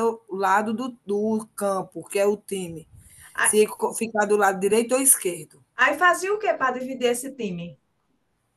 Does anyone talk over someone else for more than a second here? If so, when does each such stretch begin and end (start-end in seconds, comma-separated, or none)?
none